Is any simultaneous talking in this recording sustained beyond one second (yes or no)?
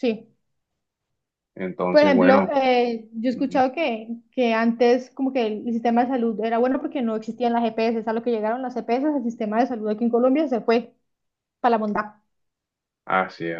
no